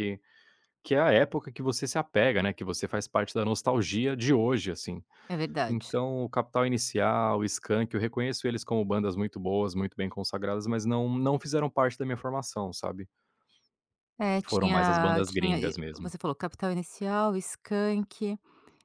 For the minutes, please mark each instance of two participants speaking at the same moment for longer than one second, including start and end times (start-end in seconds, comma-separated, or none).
14.4-16.1